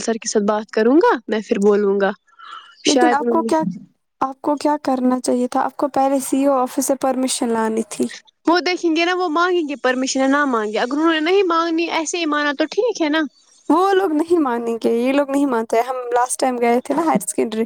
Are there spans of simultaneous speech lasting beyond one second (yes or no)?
no